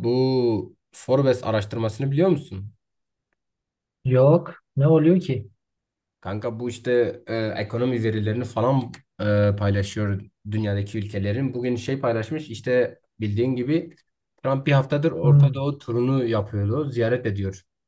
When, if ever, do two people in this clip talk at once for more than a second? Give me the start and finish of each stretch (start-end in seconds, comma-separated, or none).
none